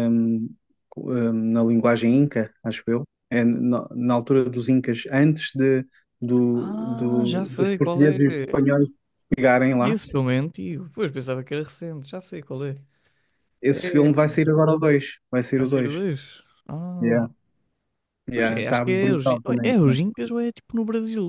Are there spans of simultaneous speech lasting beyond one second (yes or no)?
yes